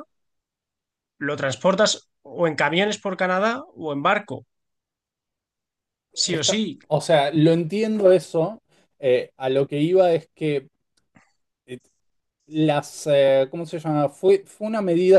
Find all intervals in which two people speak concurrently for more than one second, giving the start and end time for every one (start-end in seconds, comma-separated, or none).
none